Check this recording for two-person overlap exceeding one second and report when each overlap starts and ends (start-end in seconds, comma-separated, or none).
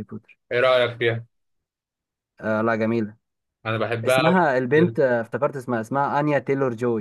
none